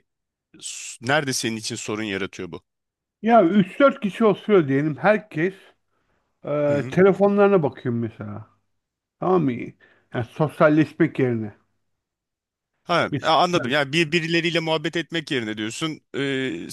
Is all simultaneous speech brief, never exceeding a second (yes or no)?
yes